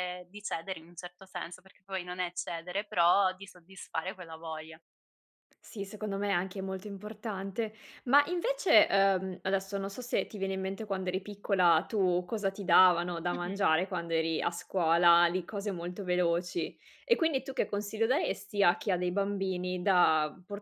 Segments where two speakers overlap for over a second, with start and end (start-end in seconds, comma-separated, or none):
none